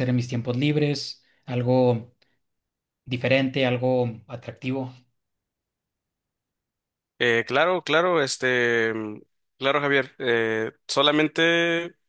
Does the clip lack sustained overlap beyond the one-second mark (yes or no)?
yes